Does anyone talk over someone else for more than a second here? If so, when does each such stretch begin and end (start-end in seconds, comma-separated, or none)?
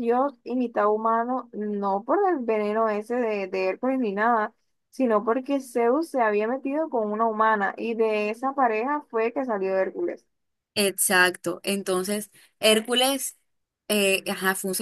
none